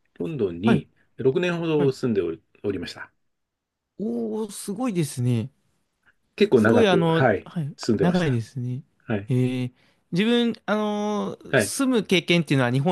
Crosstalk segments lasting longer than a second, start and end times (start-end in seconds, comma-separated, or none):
6.5-8.4